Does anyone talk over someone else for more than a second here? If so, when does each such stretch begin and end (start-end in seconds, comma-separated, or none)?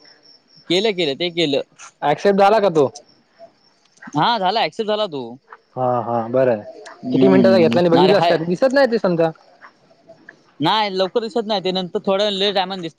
7.1-8.4